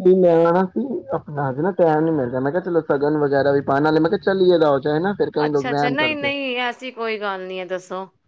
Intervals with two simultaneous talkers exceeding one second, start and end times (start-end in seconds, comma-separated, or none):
none